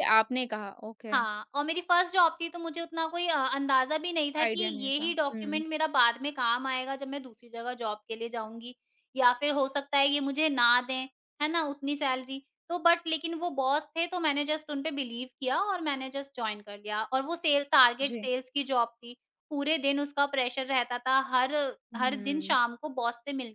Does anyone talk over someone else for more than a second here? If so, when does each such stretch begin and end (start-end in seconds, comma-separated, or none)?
4.4-5.6